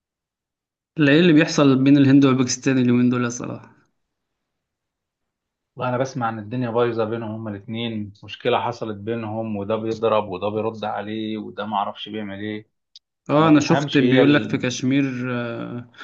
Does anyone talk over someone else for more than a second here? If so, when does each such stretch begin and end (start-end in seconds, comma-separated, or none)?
13.3-14.6